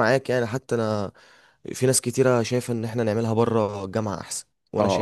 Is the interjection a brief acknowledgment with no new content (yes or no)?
no